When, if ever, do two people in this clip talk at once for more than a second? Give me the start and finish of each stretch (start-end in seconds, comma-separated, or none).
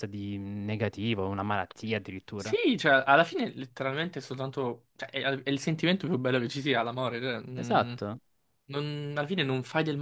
none